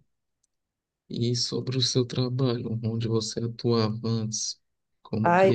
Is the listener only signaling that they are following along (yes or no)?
no